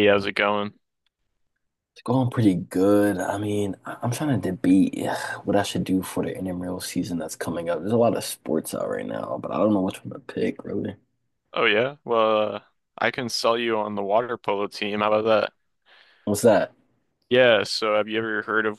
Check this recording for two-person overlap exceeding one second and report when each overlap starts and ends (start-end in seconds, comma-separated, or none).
none